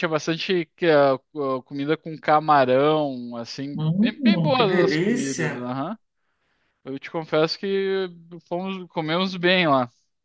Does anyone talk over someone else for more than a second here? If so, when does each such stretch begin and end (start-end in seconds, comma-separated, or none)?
3.8-5.5